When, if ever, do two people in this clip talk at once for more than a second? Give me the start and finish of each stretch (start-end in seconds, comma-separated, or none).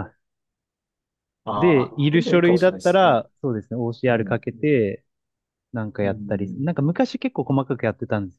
1.6-3.1